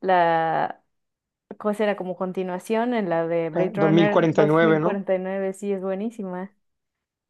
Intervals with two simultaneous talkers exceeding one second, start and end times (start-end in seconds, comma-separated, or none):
3.5-5.0